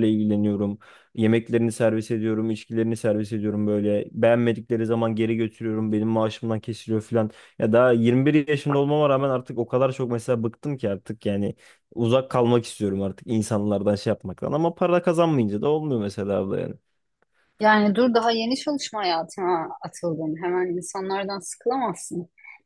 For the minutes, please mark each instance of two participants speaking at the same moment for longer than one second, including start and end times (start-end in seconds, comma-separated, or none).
none